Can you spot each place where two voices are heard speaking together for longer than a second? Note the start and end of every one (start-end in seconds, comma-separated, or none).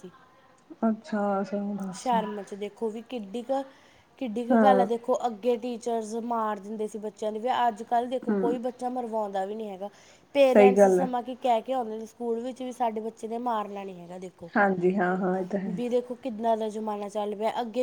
none